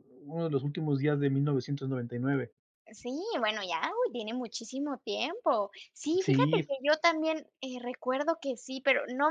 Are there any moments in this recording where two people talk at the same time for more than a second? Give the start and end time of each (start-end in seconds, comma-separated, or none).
none